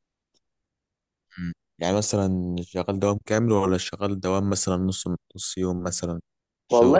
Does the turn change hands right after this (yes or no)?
yes